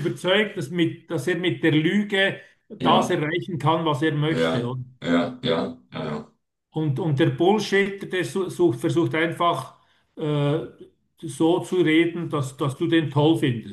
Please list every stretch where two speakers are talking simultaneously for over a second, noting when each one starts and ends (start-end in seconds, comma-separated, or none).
none